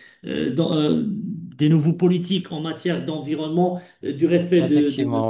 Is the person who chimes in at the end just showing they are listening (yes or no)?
yes